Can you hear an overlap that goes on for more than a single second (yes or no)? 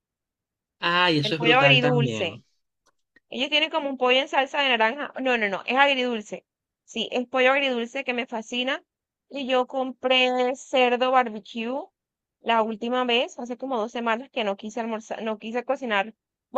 yes